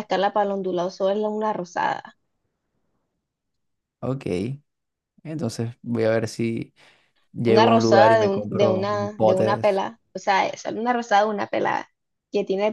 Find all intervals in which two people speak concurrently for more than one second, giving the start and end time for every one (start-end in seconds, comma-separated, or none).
7.4-9.8